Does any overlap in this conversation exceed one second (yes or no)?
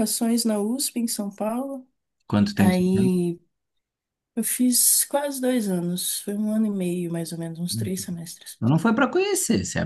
no